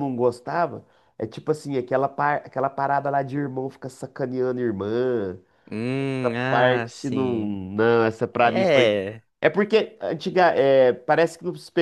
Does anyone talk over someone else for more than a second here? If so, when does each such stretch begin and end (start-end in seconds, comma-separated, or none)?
6.2-7.6